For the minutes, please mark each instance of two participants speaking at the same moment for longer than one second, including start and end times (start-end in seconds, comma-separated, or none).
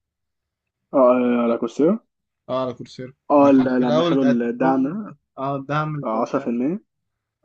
3.3-5.1